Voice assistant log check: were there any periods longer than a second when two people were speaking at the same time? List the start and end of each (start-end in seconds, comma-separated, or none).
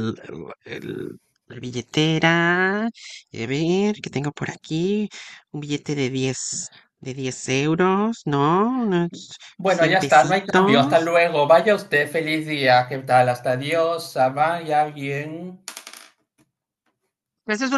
9.6-11.1